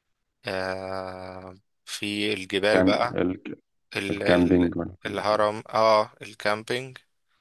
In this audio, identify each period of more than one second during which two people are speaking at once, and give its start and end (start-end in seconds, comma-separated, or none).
4.1-5.5